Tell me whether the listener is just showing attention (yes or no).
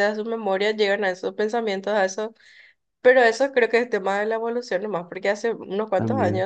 yes